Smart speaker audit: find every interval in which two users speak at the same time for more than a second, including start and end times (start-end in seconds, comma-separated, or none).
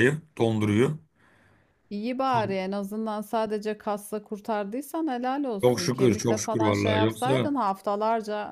5.6-7.5